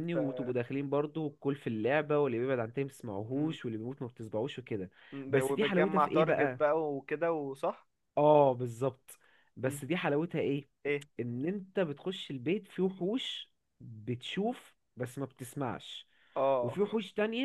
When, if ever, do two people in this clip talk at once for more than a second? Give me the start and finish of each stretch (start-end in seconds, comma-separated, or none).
5.3-6.7